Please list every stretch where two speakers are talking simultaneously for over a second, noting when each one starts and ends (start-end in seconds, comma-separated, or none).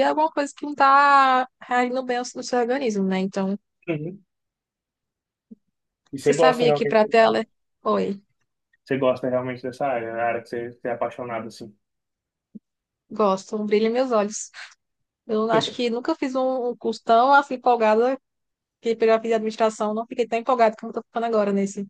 6.2-7.5